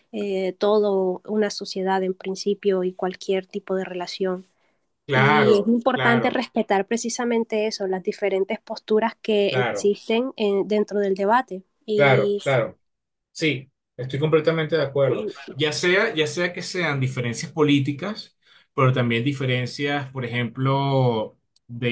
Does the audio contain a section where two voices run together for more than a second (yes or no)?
yes